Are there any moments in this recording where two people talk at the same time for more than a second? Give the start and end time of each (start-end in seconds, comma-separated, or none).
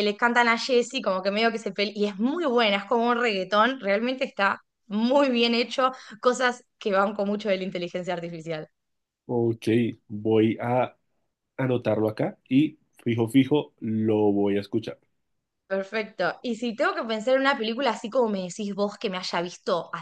none